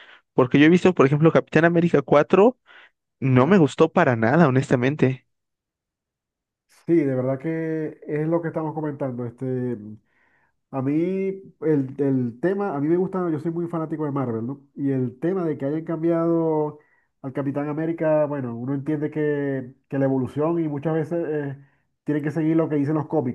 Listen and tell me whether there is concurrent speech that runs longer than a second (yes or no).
no